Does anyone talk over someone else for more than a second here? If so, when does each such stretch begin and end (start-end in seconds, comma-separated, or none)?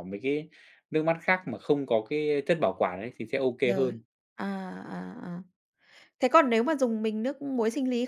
none